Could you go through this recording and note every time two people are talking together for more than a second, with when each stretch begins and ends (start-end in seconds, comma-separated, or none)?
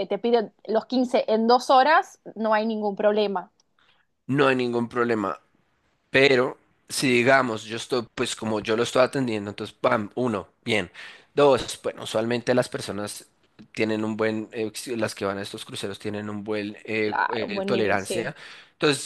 17.0-18.3